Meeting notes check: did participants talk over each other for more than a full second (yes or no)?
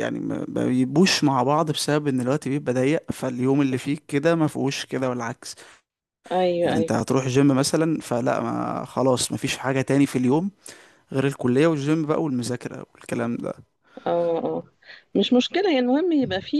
no